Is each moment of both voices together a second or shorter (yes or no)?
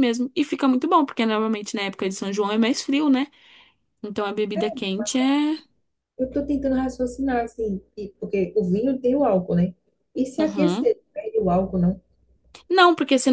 yes